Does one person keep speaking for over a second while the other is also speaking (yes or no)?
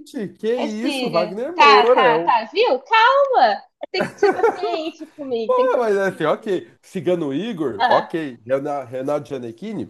yes